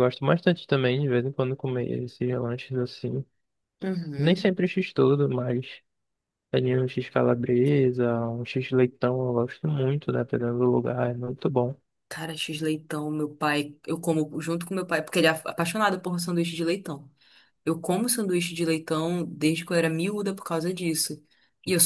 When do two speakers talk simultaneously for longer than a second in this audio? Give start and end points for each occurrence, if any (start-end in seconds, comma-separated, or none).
none